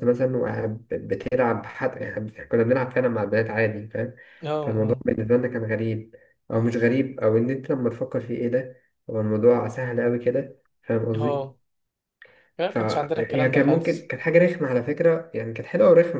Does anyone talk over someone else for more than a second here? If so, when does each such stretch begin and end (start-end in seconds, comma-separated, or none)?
12.7-14.1